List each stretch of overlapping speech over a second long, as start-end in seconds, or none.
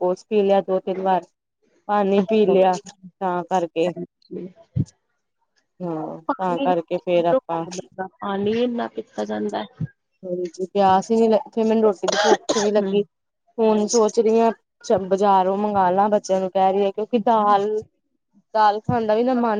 6.3-7.6